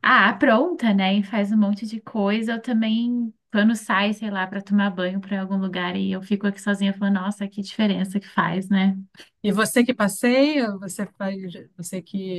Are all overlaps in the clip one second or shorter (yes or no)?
yes